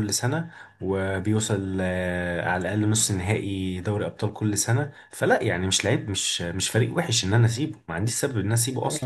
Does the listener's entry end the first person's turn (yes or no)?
yes